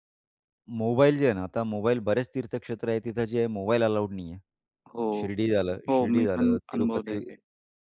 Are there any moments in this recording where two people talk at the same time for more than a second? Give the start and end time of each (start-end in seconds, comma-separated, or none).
5.9-7.2